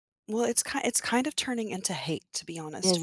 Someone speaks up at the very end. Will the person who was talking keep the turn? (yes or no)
yes